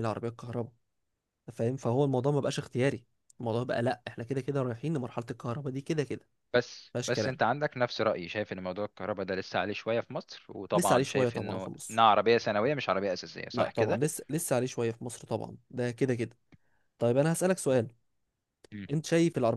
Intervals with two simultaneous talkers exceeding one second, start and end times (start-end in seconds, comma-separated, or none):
10.7-12.1